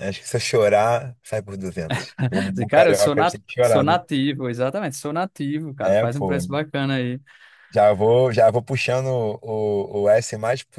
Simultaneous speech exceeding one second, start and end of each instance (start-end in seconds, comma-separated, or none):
2.5-4.0